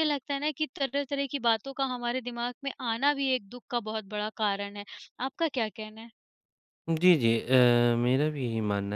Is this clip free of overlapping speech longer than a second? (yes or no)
yes